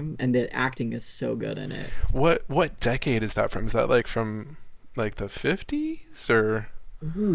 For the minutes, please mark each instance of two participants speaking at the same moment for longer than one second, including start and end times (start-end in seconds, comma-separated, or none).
none